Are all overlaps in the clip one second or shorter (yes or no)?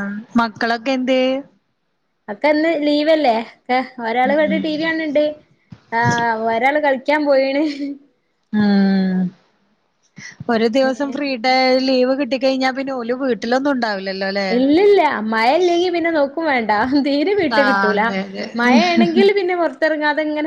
yes